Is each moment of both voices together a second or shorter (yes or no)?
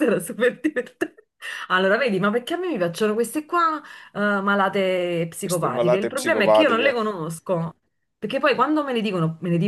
no